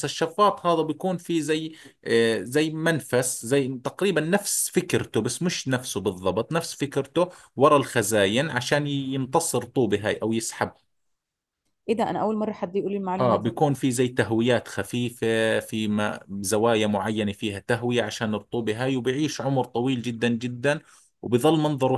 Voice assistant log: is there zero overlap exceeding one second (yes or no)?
yes